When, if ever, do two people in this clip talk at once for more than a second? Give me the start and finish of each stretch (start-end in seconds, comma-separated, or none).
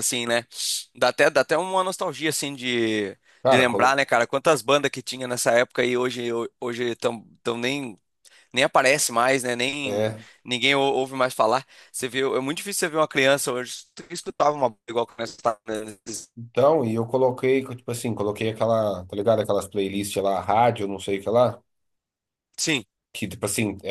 none